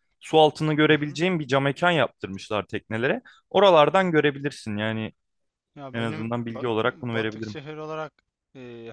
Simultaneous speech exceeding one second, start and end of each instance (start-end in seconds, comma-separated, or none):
5.9-7.6